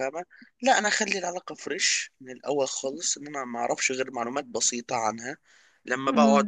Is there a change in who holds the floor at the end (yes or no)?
no